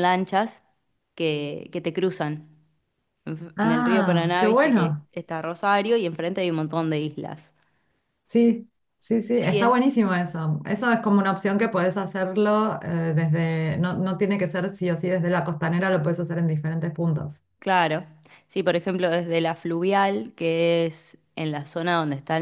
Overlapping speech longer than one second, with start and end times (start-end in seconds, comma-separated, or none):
3.6-5.1